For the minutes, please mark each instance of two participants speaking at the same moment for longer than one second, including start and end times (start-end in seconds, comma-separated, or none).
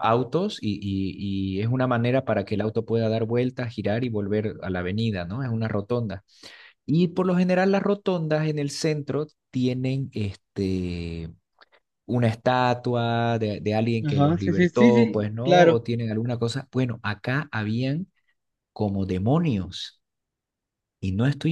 14.0-15.8